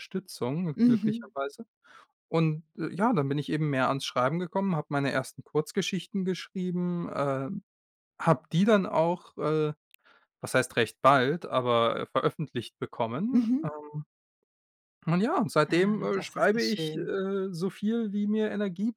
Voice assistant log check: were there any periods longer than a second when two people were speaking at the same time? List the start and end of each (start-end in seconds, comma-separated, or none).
15.7-17.1